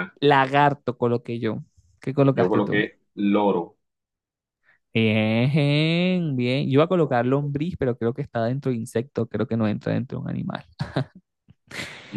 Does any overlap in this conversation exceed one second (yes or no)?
no